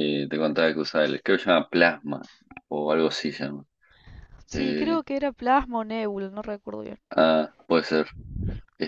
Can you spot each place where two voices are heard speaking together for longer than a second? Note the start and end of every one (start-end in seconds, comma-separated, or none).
none